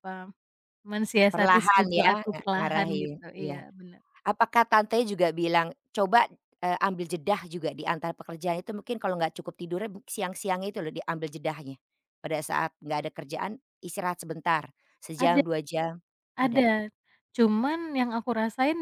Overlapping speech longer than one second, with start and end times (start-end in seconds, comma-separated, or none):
1.3-3.6